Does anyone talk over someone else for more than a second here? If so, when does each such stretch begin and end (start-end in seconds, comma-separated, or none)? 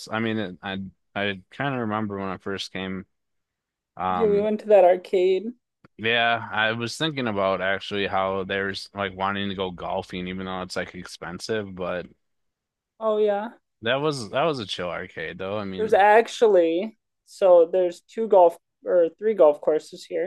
none